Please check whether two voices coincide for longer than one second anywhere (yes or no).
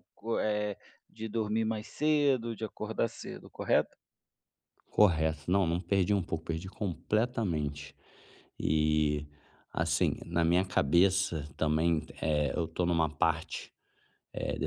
no